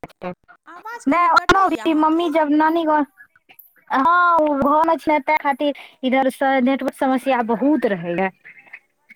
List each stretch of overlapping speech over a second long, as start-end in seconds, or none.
1.1-2.5